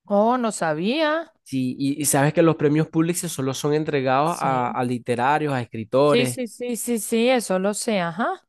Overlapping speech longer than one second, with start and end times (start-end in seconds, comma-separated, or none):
none